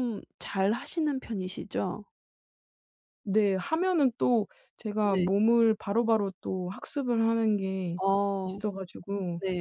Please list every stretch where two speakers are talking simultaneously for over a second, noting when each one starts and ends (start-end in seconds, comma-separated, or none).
none